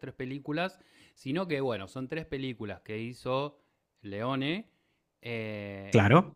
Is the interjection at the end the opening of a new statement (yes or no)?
no